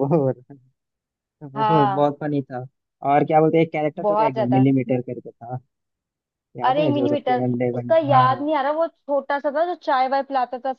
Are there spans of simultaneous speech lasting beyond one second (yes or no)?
yes